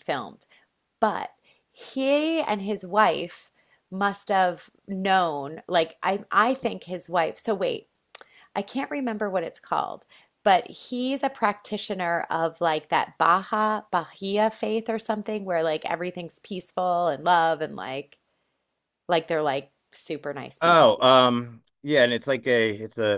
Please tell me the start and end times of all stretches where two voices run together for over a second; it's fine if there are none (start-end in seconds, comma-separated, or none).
none